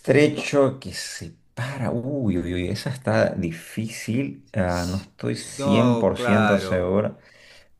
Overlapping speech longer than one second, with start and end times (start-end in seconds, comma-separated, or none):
4.6-6.9